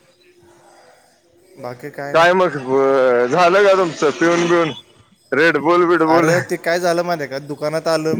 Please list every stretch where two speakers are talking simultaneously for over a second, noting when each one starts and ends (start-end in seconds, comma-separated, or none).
none